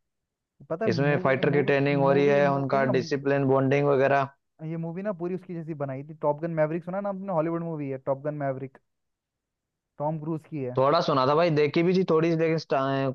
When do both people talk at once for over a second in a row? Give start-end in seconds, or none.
0.9-2.9